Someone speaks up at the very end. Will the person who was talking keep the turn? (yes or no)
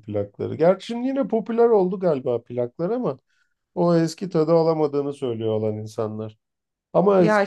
yes